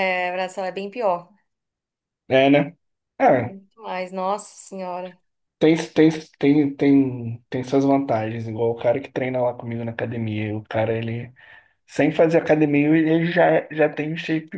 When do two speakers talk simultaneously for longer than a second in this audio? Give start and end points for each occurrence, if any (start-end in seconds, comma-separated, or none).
none